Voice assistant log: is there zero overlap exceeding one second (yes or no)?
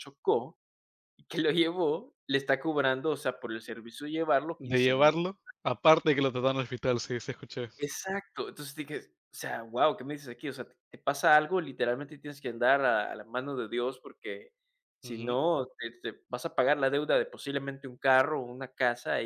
yes